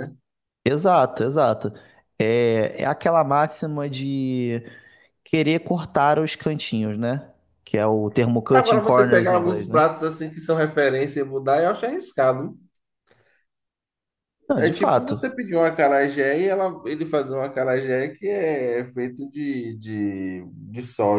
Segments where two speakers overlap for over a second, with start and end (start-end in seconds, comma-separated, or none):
8.5-9.8